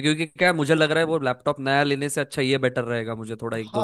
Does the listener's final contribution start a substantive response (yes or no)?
yes